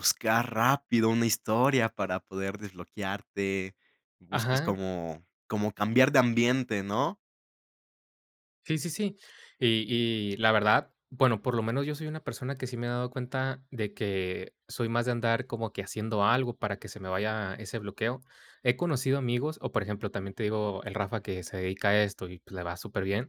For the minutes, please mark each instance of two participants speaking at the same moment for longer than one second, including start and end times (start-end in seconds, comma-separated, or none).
none